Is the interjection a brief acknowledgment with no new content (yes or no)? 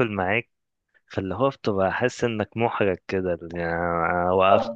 yes